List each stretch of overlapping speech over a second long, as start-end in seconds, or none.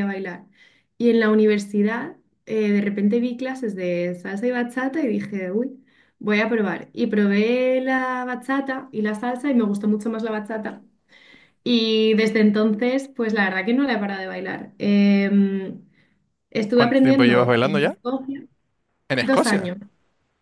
16.7-18.0